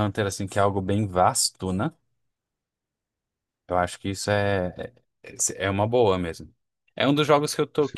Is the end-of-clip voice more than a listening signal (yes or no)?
no